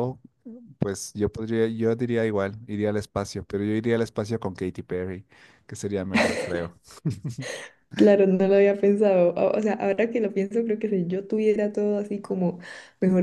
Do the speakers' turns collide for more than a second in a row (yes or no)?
no